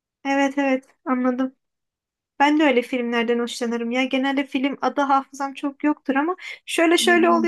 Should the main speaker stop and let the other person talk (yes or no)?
no